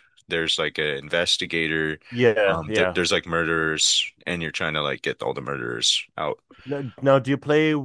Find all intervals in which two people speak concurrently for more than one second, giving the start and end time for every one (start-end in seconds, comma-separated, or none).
none